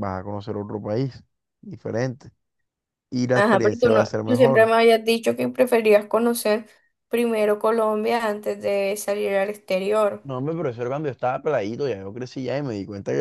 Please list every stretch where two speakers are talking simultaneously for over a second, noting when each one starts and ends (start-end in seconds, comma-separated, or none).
3.3-4.7